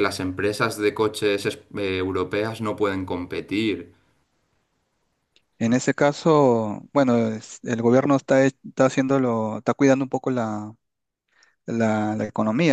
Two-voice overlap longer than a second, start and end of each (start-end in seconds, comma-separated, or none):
none